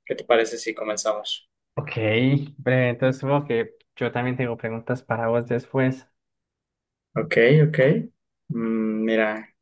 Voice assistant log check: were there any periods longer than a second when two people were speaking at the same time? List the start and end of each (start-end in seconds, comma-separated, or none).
none